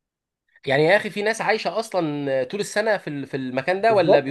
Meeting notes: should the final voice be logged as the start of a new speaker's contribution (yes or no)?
yes